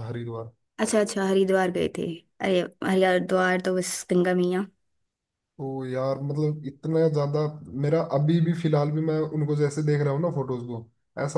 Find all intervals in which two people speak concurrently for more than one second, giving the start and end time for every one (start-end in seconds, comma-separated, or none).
none